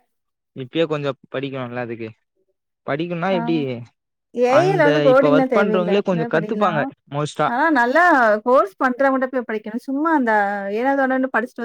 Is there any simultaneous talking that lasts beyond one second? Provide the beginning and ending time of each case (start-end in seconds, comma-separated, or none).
4.6-6.7